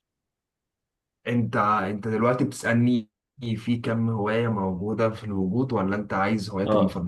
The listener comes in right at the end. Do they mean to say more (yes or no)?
yes